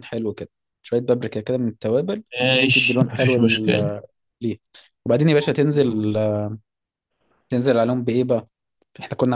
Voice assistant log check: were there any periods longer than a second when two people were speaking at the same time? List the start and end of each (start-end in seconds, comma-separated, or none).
2.7-3.9